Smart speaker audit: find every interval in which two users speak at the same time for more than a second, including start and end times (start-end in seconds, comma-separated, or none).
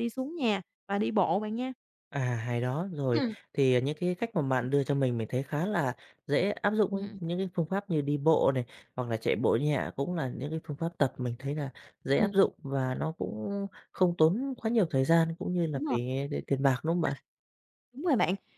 none